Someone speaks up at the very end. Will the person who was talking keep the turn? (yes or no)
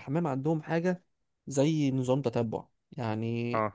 yes